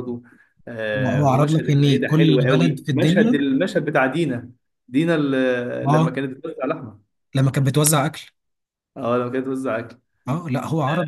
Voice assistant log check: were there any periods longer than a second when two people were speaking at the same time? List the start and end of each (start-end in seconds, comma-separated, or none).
1.2-3.4